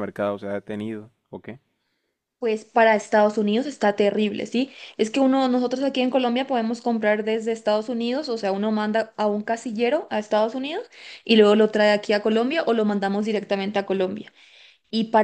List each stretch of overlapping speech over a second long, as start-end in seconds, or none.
none